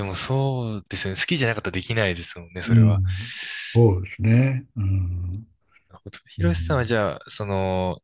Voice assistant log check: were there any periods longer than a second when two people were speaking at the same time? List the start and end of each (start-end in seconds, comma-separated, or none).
none